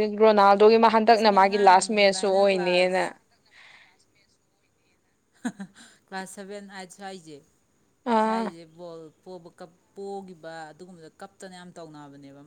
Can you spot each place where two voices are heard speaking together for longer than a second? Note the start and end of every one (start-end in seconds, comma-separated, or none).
1.1-3.0